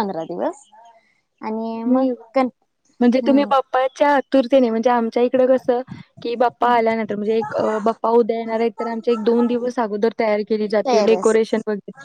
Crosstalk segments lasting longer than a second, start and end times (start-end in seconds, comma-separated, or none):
none